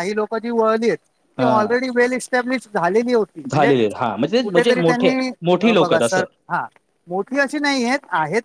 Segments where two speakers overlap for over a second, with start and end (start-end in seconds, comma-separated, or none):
4.4-6.2